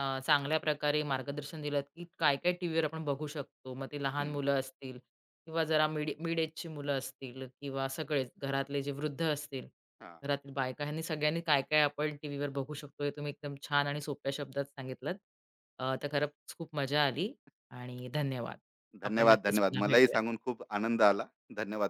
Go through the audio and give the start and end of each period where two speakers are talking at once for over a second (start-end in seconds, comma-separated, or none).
19.0-20.4